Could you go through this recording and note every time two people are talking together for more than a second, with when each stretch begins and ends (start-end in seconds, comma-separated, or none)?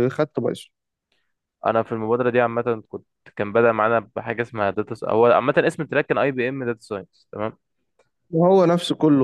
none